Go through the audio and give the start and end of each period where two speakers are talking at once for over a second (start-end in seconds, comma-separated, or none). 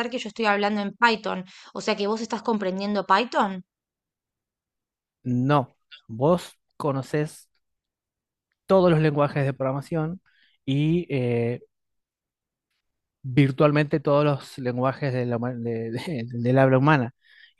none